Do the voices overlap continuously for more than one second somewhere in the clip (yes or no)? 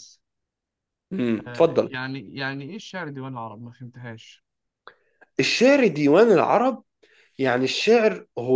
no